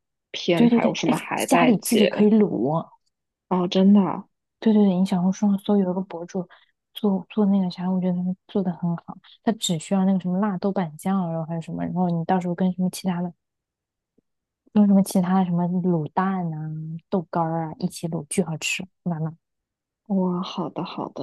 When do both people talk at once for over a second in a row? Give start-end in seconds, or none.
0.5-2.3